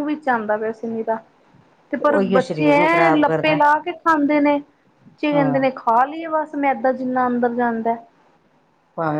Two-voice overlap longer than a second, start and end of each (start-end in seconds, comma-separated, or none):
2.0-3.6